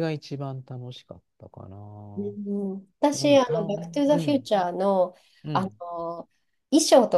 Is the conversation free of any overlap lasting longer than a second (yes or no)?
no